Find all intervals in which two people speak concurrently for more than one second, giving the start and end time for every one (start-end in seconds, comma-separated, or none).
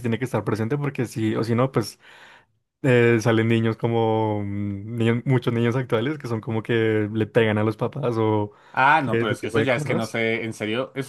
9.0-10.2